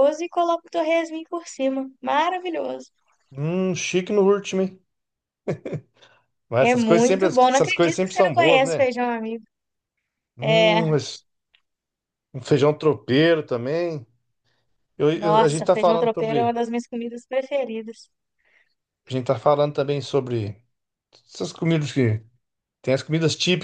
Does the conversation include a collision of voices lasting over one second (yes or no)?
yes